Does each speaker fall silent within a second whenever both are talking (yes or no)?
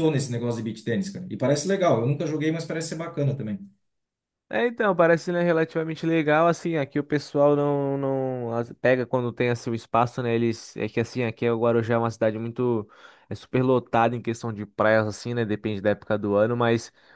yes